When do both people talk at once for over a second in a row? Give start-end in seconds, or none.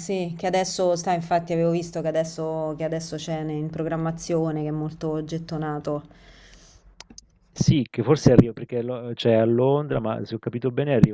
none